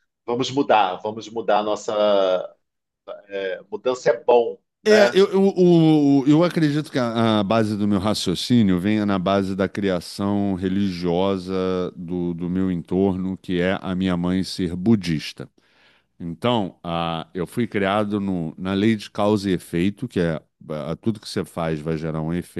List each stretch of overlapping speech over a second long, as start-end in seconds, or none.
none